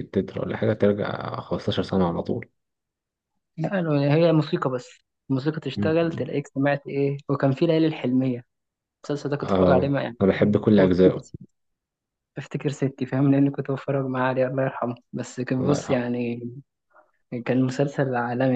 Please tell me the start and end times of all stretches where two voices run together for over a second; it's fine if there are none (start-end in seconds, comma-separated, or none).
9.4-11.3